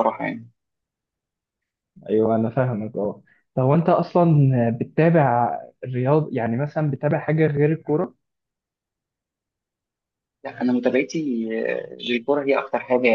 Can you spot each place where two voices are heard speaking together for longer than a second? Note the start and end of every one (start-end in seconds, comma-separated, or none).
none